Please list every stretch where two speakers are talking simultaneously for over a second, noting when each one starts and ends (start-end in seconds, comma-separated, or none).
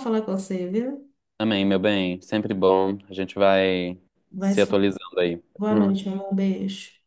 none